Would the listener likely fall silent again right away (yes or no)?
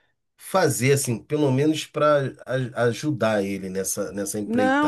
no